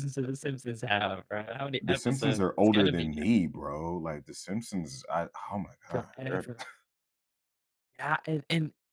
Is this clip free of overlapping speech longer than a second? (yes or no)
no